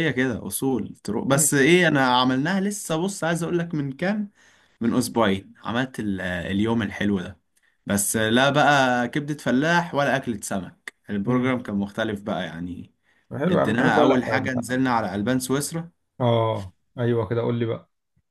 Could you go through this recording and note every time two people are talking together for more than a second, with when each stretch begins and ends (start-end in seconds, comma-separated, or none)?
13.5-14.8